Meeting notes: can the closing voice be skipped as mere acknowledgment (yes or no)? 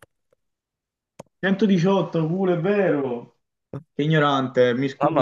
no